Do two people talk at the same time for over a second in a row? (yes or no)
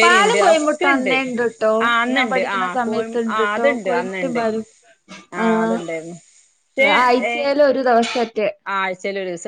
yes